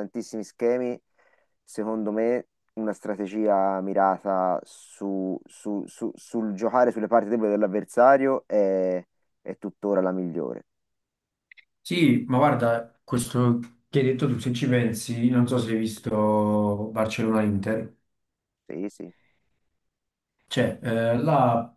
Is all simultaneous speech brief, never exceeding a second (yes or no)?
yes